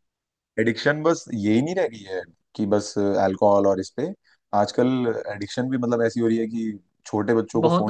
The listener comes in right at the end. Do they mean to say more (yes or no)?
no